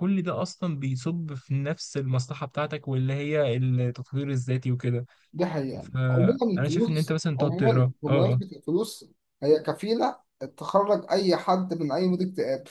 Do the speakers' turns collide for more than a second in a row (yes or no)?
yes